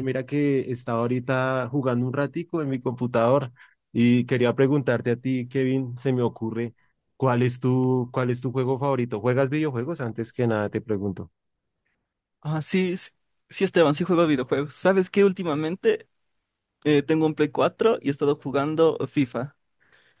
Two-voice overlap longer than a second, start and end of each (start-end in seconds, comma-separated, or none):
none